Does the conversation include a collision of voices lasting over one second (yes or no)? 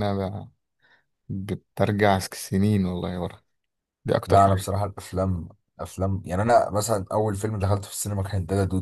no